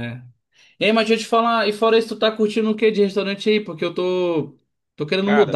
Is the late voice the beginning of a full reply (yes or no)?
no